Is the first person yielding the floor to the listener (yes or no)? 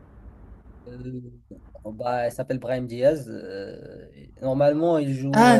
yes